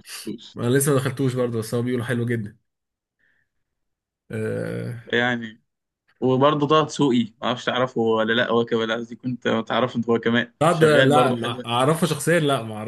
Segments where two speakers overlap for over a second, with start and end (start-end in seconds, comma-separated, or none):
10.6-11.9